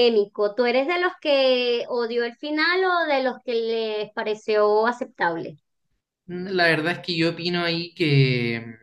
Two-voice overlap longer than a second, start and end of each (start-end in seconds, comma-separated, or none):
none